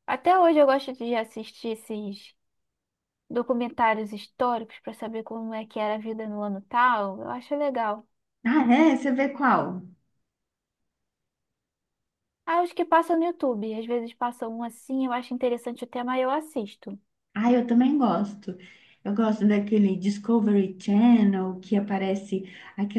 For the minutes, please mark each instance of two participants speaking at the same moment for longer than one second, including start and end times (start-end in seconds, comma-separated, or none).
none